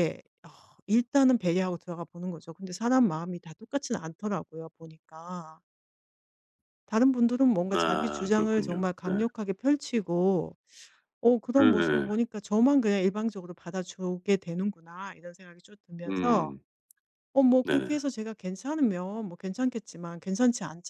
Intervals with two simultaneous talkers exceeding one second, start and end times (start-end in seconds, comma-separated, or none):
7.8-9.2